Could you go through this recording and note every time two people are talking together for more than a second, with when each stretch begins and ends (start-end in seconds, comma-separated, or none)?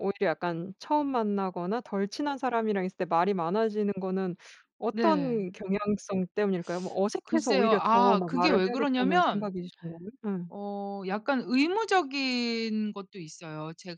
7.2-9.5